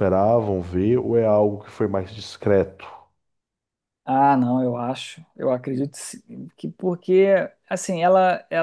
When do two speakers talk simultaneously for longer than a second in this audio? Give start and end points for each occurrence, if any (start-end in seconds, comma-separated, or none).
none